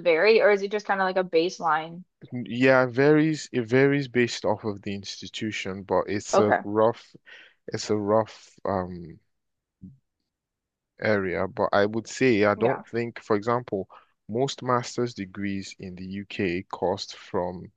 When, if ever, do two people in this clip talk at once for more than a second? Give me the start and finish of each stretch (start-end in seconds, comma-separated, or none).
none